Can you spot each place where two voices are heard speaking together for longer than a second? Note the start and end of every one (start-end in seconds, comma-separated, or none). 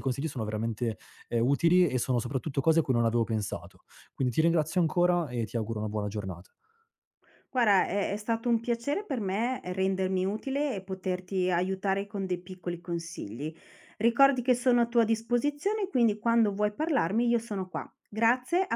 none